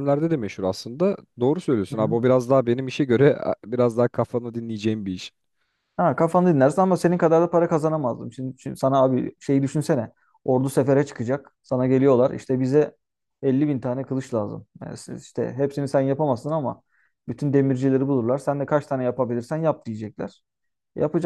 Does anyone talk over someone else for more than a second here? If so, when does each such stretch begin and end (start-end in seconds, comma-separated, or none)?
none